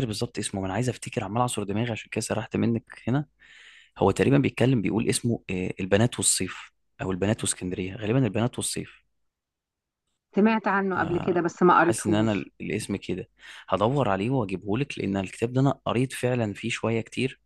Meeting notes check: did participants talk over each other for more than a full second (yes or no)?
yes